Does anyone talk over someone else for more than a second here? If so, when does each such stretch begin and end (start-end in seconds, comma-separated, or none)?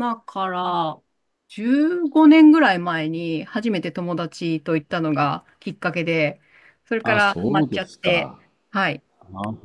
7.0-8.4